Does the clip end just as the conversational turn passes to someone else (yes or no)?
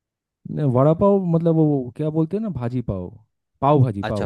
yes